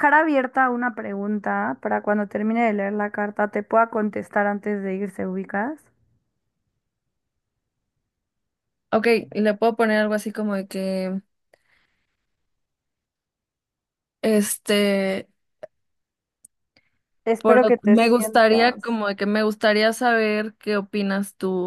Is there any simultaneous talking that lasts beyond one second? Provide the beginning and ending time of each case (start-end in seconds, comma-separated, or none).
17.4-19.0